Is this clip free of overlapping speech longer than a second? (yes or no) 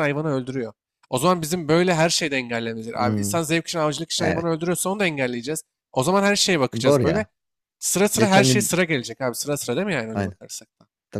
yes